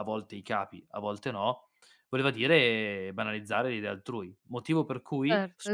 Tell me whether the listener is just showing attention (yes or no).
no